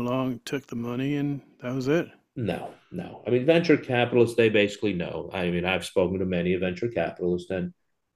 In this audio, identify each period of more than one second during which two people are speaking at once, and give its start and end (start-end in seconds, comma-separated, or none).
none